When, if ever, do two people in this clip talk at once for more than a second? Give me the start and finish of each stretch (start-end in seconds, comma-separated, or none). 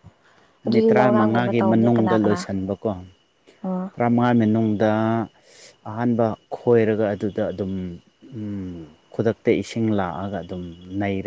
0.7-2.4